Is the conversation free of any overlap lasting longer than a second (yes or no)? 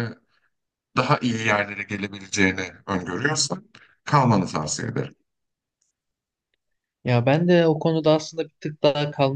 yes